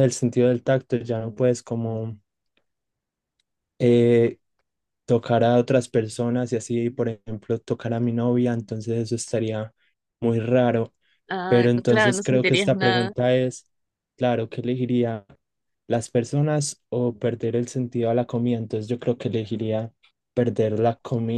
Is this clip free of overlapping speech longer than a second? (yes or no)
no